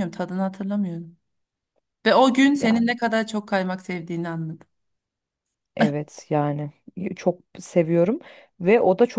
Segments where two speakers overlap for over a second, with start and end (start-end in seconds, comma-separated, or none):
none